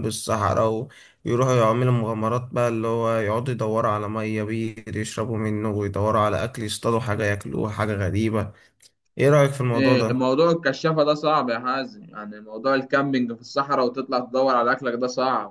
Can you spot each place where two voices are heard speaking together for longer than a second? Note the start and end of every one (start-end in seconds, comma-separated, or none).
none